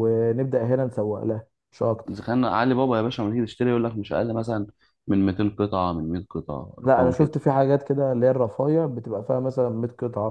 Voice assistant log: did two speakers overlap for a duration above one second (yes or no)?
no